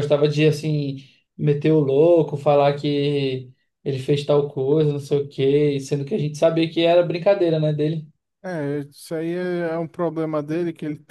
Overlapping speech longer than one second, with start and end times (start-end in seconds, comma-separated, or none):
none